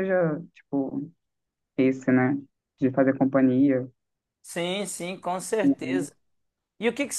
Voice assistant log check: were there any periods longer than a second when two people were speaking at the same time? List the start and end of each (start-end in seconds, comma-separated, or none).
none